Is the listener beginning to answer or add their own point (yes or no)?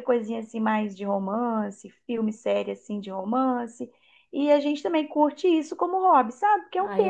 yes